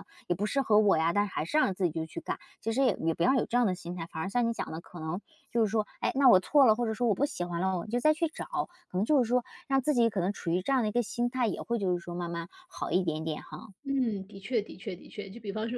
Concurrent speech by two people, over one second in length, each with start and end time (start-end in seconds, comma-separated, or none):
none